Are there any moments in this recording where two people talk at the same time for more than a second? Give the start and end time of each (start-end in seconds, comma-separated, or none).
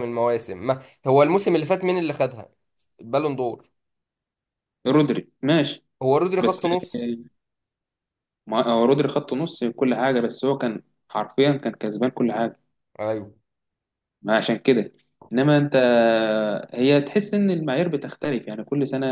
none